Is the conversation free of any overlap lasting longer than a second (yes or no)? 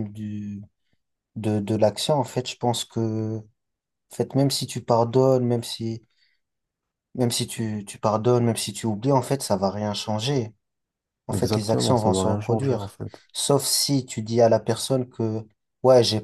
no